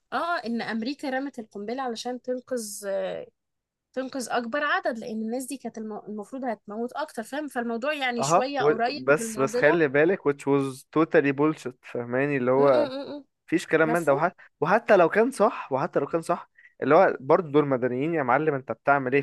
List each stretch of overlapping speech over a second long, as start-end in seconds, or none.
8.2-9.8